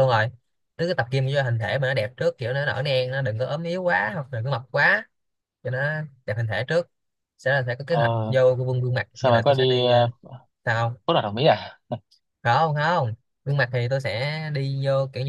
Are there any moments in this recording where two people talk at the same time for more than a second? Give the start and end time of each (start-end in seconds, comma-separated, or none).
none